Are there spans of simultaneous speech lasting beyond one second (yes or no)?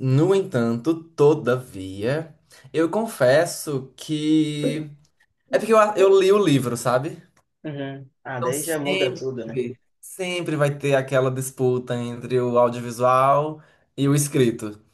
yes